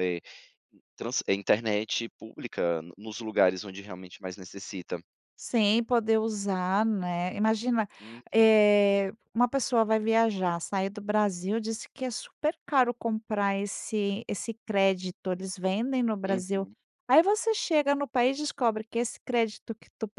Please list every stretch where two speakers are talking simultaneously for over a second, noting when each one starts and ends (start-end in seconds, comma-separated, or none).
none